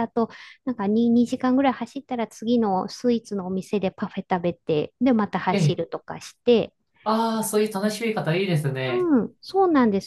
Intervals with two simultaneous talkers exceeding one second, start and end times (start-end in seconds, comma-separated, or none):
none